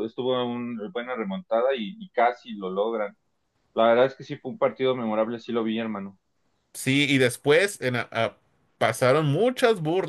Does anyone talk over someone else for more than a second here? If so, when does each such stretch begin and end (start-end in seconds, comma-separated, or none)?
none